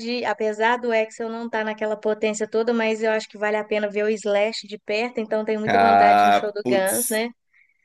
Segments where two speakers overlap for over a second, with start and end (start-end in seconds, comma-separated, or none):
5.7-7.2